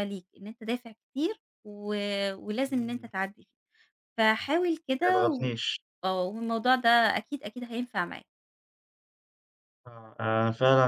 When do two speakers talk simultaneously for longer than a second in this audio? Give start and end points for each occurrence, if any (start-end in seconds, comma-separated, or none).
none